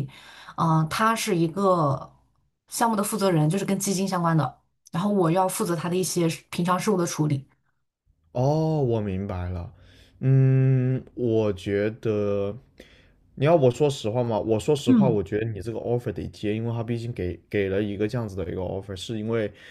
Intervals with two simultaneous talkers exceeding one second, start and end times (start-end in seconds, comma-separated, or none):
none